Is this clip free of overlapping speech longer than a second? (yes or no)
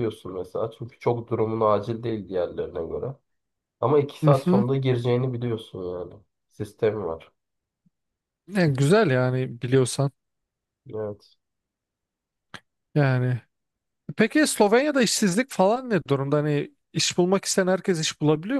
yes